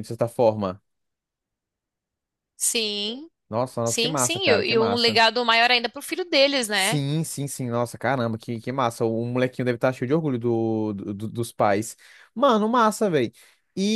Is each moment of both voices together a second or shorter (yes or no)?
no